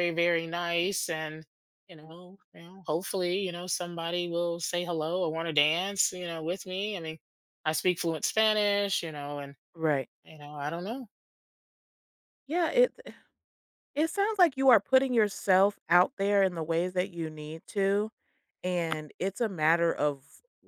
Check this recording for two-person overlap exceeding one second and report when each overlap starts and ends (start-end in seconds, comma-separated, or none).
none